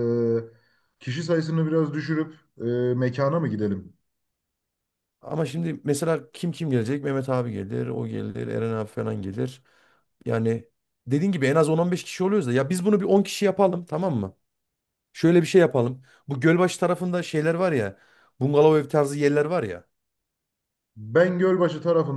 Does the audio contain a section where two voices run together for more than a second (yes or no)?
no